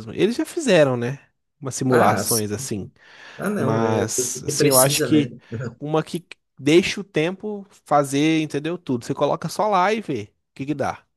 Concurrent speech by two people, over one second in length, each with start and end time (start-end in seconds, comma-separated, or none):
3.6-5.3